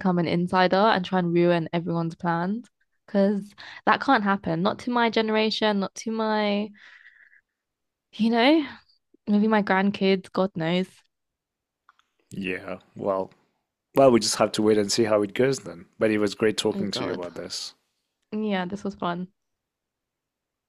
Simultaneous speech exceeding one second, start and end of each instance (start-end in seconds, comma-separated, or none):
none